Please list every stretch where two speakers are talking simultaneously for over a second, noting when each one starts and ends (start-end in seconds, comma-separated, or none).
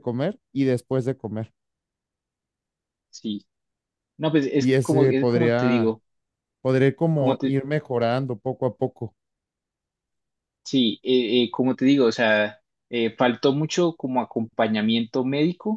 4.6-6.0